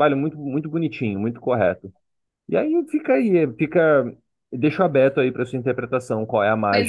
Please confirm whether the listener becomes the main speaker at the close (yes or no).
yes